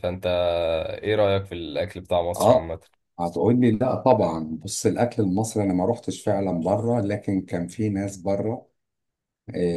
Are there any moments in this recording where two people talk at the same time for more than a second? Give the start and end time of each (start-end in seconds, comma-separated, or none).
none